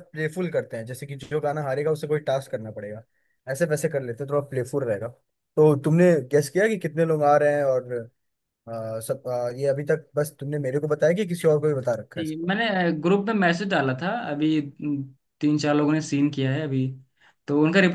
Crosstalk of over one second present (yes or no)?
no